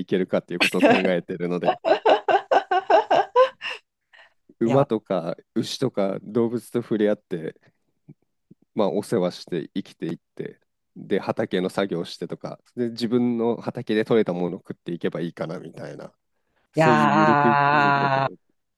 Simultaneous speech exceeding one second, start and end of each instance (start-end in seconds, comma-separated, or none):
16.8-18.2